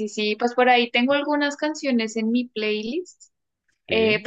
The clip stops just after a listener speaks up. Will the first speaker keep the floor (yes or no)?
yes